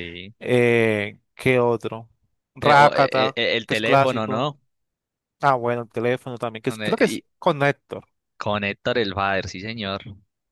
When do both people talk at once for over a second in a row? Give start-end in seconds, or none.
2.6-4.5